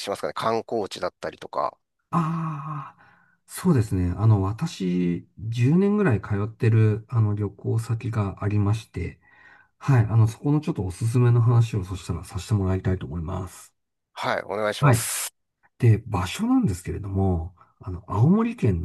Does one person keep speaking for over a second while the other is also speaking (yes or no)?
no